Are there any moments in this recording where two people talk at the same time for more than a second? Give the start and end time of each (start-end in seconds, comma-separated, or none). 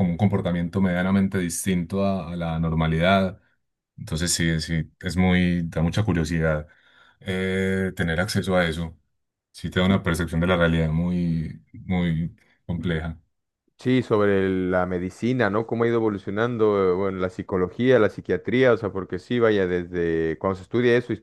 none